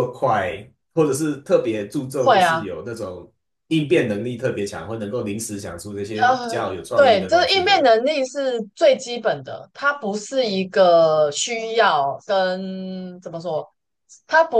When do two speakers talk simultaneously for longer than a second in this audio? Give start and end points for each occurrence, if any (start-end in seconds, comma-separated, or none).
6.2-7.9